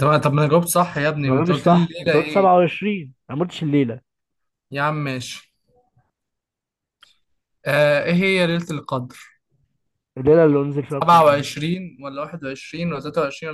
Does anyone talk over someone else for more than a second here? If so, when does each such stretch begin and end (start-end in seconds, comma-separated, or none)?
1.2-2.5